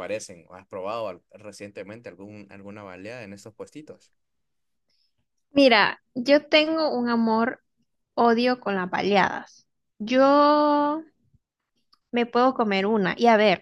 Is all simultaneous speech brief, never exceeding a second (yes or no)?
yes